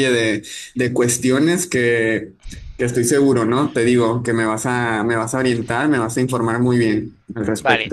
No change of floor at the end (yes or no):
no